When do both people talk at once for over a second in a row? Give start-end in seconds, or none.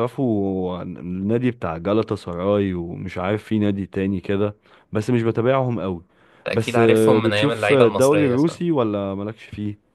6.5-8.6